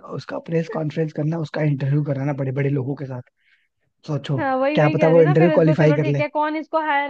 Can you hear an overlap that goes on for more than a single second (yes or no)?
yes